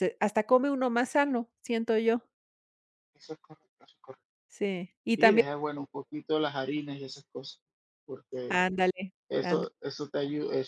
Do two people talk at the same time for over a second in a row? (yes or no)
no